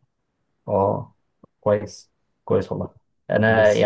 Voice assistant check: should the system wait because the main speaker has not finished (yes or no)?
yes